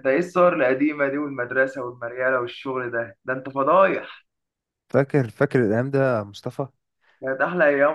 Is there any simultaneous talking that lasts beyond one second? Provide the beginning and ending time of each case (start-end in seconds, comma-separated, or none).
none